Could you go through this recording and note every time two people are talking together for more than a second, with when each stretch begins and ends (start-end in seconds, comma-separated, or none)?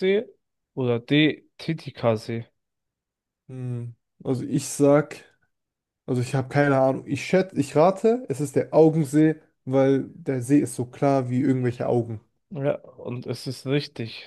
none